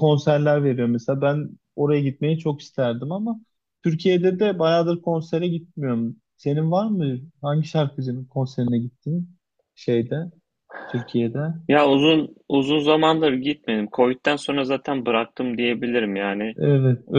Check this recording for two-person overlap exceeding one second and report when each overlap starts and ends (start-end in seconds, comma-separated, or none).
none